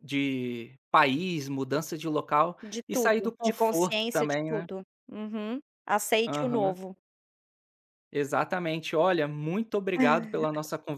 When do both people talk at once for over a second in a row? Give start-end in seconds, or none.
2.6-4.7